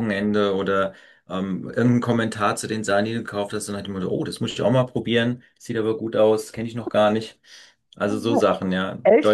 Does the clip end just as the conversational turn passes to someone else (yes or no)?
yes